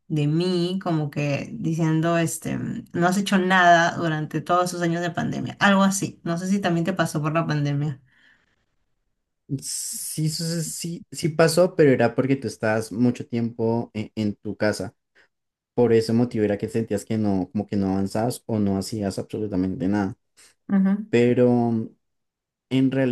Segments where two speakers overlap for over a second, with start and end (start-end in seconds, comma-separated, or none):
none